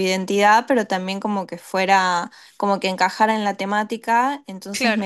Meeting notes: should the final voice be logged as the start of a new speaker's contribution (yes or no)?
no